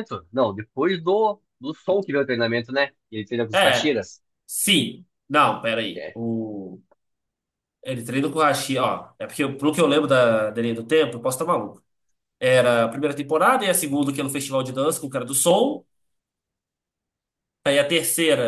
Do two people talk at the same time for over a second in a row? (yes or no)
no